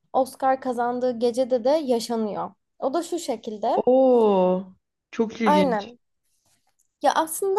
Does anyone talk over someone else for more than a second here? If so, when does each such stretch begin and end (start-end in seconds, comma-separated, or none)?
none